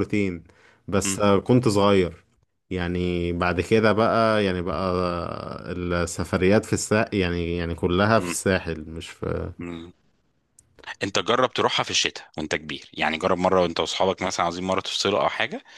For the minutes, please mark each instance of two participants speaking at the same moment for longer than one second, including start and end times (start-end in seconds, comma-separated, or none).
none